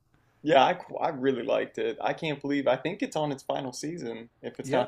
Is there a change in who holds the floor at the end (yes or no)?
yes